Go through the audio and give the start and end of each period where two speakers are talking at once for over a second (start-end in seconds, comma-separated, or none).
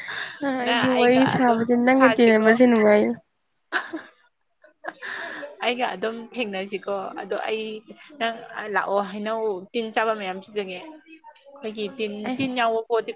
0.6-2.5